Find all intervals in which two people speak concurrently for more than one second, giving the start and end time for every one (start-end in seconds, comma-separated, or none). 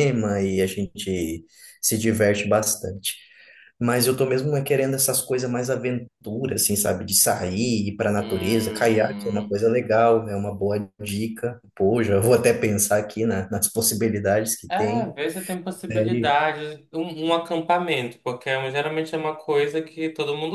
8.2-9.5